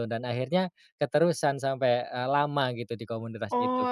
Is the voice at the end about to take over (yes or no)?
yes